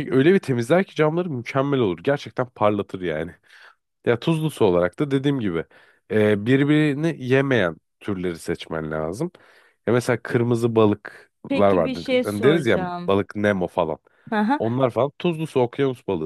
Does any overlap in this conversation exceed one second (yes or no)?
yes